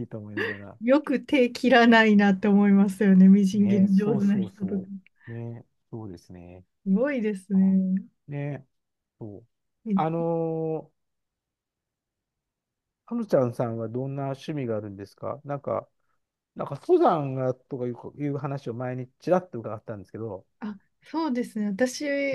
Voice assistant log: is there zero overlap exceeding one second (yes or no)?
no